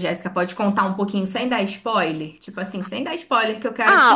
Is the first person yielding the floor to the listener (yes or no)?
yes